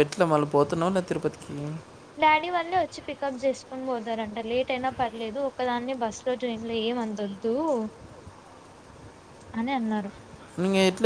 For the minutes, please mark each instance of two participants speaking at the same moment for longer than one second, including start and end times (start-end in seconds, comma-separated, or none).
none